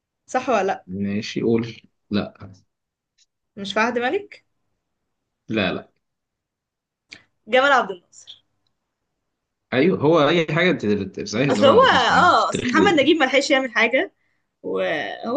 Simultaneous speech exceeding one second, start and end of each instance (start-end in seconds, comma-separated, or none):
11.5-13.1